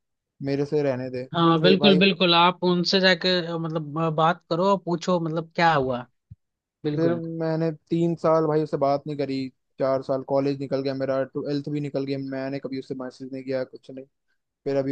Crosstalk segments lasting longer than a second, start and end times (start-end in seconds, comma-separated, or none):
none